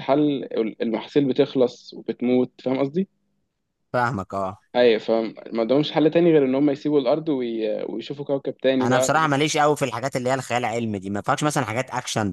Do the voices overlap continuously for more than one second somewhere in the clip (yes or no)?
no